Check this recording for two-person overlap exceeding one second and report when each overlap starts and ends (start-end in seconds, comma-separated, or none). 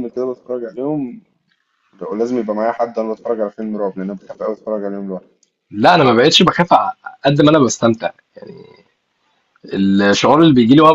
none